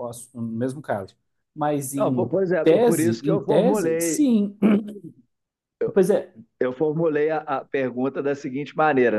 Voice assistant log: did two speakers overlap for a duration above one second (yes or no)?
yes